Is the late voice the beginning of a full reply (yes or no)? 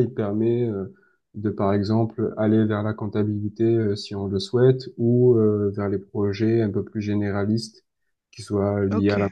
no